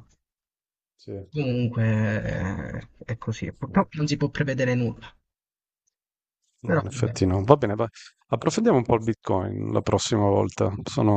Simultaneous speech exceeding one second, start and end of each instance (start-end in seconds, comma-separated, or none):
none